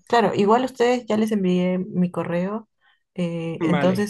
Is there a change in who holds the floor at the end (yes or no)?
no